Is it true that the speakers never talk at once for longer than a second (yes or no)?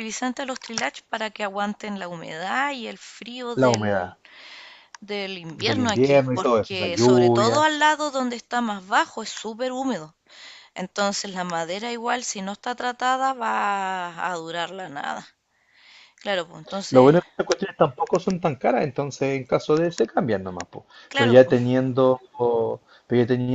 no